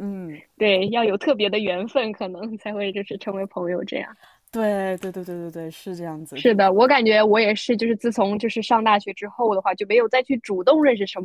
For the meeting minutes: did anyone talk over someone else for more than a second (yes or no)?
no